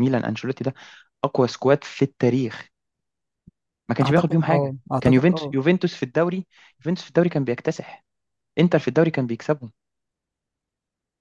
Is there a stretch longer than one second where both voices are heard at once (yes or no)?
yes